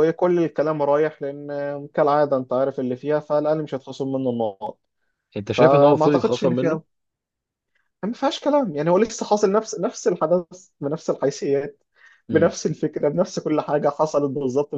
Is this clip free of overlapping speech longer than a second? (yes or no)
no